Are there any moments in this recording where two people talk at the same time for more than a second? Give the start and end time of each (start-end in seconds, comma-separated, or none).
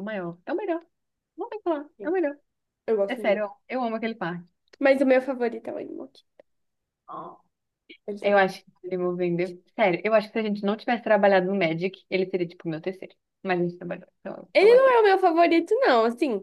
none